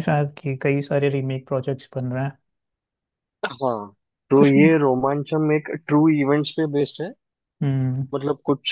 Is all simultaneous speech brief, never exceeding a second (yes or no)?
yes